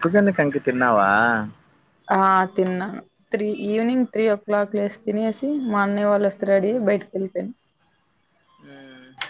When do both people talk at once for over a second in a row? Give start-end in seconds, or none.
none